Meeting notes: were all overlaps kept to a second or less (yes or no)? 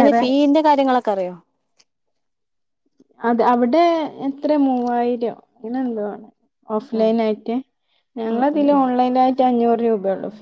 yes